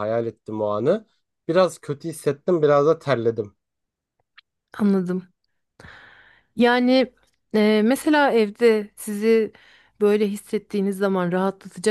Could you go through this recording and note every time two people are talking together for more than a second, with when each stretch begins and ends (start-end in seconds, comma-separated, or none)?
none